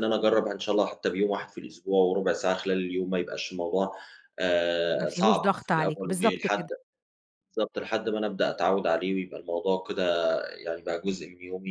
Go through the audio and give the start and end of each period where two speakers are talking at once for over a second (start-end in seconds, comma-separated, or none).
5.0-6.7